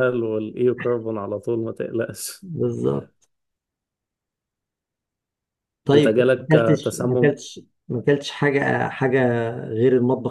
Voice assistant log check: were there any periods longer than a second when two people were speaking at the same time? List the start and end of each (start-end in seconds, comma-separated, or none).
5.9-7.4